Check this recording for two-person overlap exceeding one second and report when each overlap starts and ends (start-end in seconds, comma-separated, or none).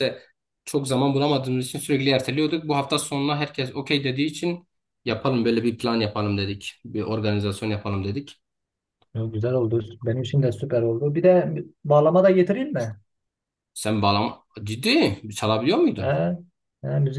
none